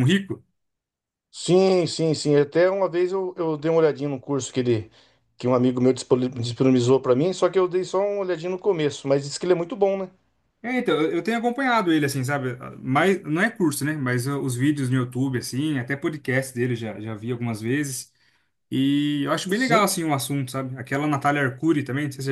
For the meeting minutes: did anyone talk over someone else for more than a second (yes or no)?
no